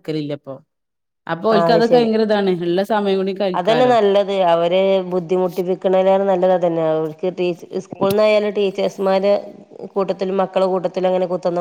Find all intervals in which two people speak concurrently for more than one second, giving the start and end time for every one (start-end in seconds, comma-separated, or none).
none